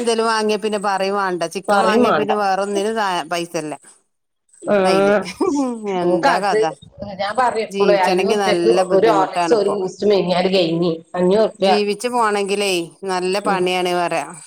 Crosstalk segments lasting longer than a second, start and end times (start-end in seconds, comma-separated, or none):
7.7-9.8